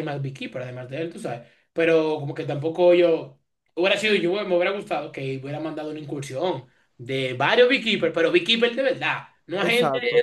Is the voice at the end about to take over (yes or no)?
yes